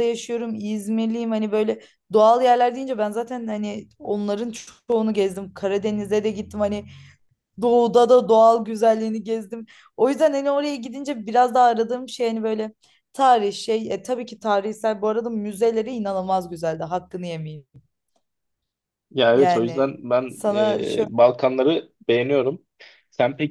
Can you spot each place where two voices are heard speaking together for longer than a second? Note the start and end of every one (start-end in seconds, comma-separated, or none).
19.3-21.1